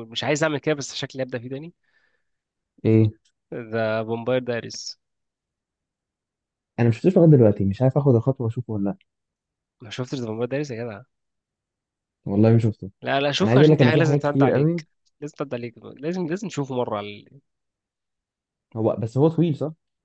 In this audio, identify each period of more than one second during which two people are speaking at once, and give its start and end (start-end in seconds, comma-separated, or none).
13.4-14.8